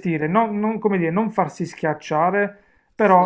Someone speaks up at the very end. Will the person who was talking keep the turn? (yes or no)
yes